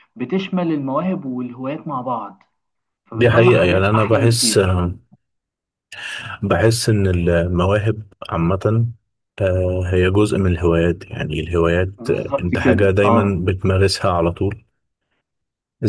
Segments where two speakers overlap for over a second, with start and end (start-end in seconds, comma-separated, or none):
3.1-4.8, 12.0-13.4